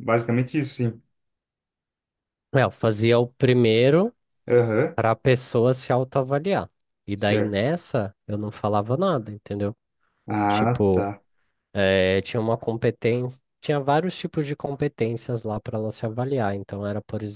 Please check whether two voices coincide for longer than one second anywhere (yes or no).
no